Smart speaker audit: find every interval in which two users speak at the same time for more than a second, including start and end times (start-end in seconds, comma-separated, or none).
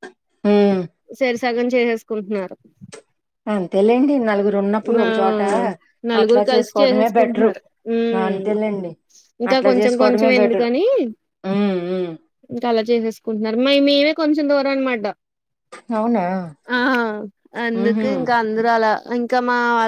6.2-7.5